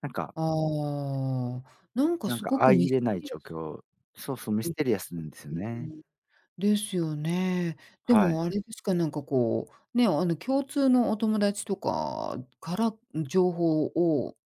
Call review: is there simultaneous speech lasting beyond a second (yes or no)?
yes